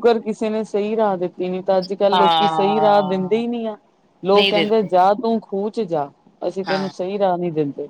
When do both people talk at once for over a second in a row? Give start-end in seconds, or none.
2.1-3.4